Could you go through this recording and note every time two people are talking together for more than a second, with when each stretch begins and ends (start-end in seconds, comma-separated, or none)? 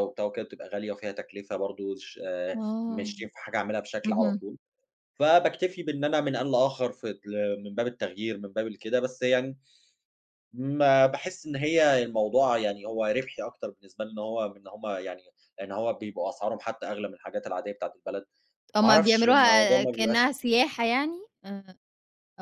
18.8-20.3